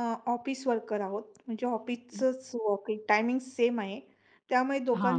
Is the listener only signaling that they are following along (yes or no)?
yes